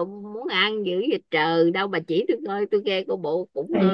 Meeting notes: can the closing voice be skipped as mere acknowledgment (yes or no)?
no